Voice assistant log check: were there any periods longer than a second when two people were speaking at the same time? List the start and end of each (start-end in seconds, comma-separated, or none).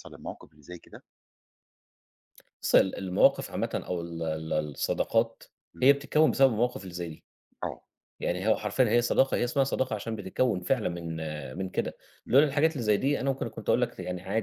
none